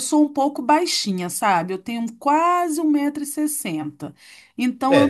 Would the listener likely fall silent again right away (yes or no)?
no